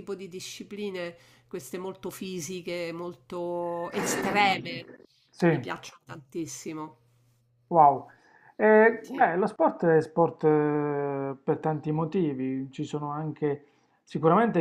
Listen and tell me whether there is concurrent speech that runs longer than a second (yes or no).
no